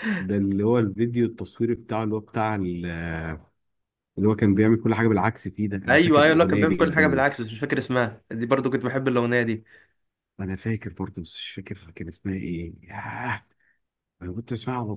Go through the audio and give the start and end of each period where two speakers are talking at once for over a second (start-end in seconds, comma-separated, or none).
5.9-7.2